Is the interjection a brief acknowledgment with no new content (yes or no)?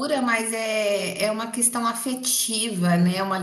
yes